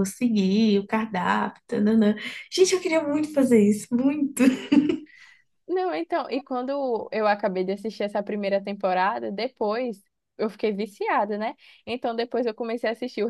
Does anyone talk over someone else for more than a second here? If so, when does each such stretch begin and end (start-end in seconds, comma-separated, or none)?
none